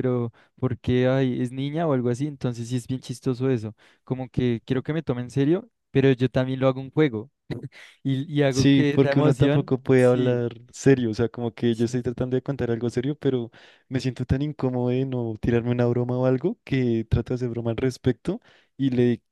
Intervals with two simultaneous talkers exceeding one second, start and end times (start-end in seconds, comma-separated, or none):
8.5-10.4